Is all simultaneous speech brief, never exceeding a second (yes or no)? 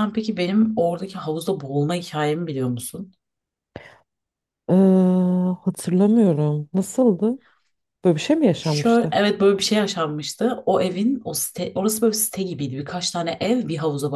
yes